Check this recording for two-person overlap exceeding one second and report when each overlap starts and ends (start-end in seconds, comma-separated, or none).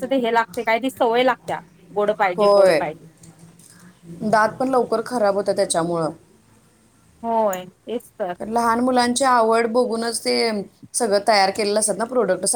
none